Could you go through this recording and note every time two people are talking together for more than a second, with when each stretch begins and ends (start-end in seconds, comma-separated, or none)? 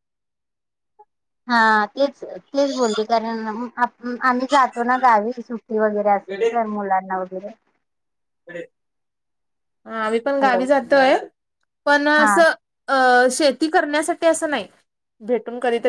none